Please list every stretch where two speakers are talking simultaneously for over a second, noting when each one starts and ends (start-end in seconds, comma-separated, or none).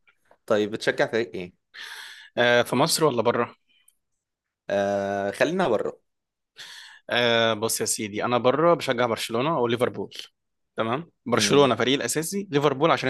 none